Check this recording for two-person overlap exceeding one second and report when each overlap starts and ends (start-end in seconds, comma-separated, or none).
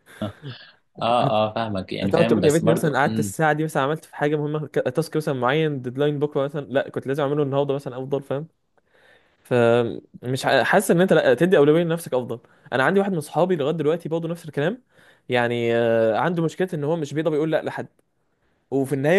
2.0-3.3